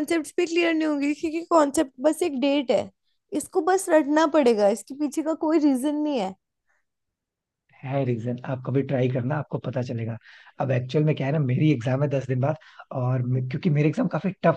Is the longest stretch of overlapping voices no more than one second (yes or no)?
yes